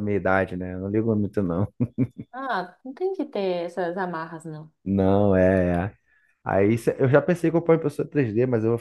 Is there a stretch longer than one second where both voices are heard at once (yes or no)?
no